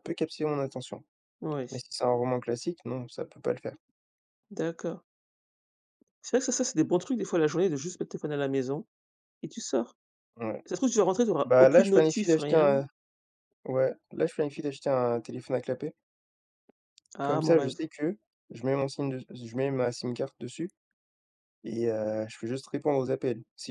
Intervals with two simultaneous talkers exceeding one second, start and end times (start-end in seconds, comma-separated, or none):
11.4-12.8